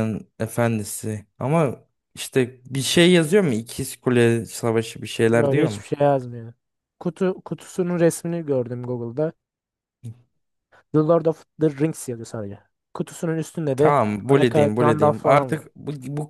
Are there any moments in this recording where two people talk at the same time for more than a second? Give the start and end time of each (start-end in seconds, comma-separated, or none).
13.8-15.7